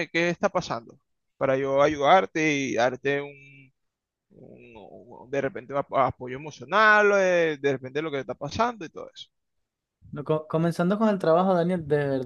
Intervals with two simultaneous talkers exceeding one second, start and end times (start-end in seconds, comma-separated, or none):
none